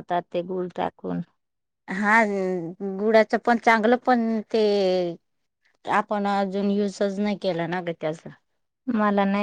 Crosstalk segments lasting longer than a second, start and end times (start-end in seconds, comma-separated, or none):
none